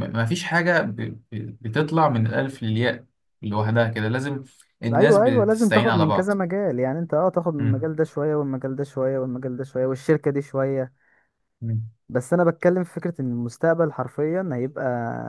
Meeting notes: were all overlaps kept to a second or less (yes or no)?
no